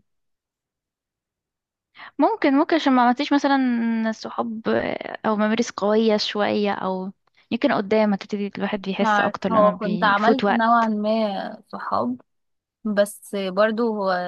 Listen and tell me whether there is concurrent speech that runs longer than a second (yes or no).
yes